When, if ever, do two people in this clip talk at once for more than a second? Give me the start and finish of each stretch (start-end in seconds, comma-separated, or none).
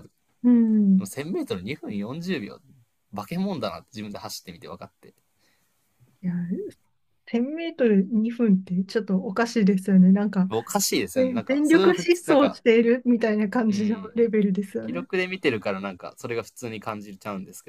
11.2-12.6